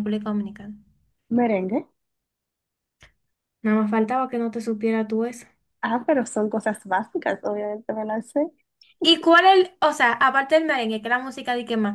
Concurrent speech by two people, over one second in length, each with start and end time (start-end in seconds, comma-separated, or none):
none